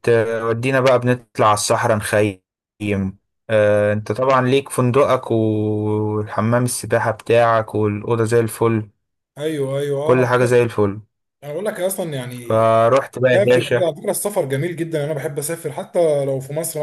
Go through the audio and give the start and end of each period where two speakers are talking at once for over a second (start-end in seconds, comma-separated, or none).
none